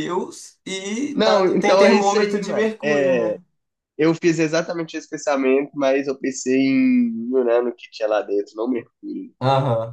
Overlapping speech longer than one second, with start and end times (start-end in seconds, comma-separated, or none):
1.1-3.4